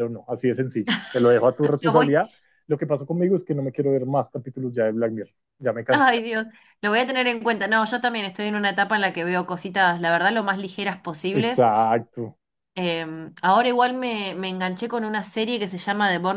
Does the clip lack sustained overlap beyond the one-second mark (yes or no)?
yes